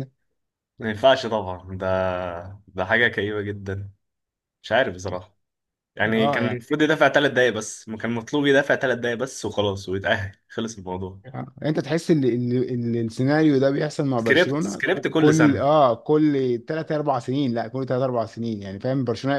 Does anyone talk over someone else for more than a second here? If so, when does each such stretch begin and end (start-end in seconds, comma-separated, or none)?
14.2-15.7